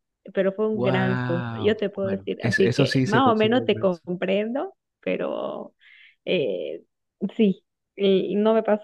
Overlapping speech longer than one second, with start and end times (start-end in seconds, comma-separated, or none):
0.7-4.0